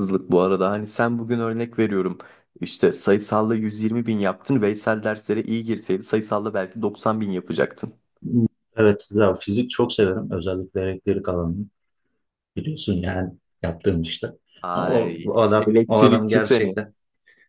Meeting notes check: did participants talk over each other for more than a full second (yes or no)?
yes